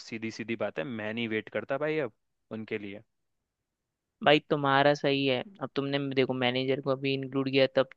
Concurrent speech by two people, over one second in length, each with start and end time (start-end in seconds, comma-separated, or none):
none